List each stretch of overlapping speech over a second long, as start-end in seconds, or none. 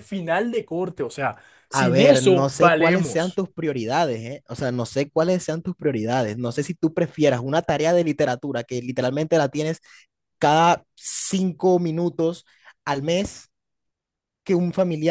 1.7-3.4